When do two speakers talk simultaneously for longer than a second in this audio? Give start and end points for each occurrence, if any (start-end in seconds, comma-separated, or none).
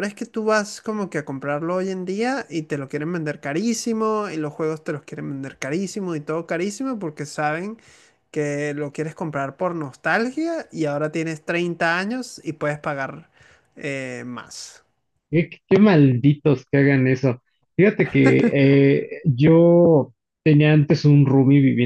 none